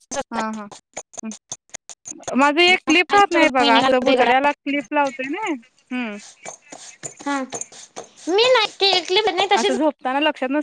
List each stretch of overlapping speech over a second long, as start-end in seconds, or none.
3.0-4.5